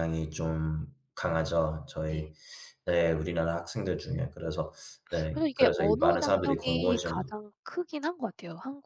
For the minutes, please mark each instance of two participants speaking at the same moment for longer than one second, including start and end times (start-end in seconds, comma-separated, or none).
5.3-7.4